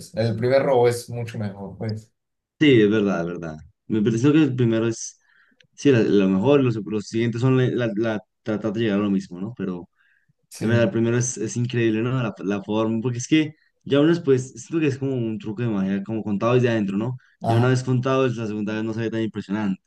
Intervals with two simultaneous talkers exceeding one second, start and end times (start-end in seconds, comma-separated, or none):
none